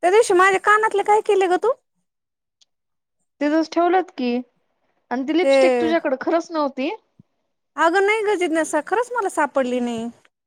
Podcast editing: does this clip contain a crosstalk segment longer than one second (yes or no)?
no